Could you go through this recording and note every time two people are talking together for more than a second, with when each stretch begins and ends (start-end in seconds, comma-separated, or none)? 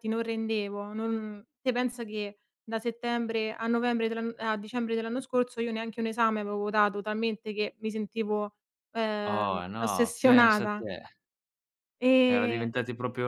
9.3-10.8